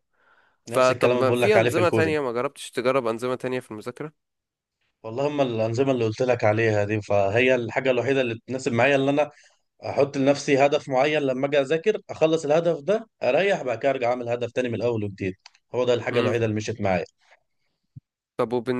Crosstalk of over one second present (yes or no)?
yes